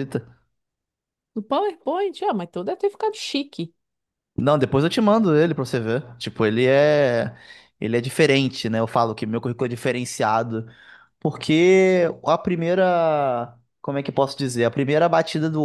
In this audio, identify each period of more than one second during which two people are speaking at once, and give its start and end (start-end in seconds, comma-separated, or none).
none